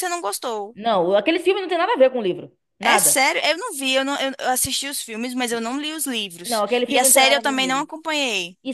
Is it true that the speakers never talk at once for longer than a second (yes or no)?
no